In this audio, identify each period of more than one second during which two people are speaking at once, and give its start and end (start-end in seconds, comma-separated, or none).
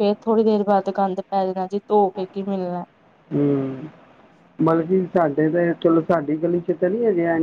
none